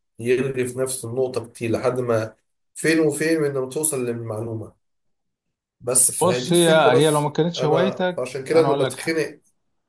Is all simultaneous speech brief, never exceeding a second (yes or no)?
no